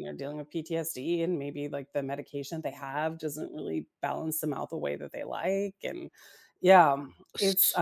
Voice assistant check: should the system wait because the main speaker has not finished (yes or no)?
yes